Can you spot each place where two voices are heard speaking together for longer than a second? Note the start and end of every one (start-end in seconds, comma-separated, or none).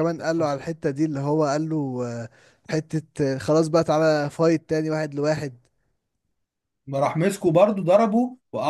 none